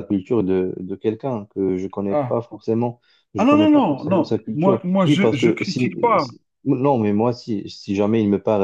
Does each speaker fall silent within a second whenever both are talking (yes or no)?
no